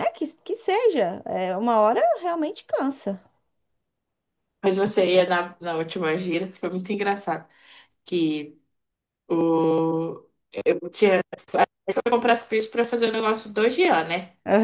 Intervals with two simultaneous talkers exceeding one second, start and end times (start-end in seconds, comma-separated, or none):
none